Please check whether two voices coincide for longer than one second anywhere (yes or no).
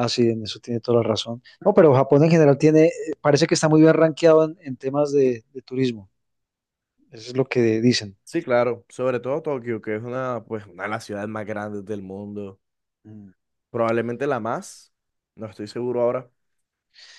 no